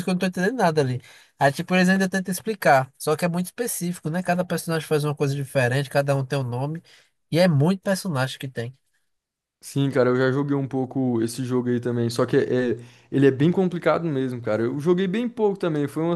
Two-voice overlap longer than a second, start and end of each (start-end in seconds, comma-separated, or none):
none